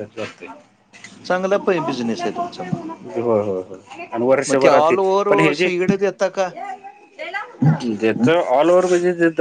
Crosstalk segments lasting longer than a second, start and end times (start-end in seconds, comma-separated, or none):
none